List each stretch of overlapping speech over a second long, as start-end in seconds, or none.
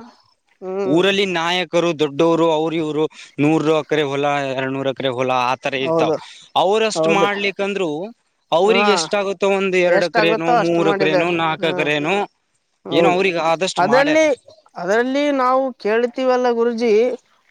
10.0-11.9